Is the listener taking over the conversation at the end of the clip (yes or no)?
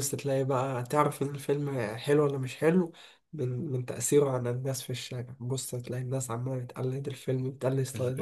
yes